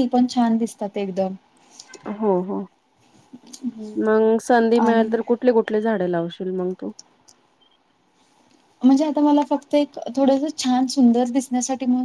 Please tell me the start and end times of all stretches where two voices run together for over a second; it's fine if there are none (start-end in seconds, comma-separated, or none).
none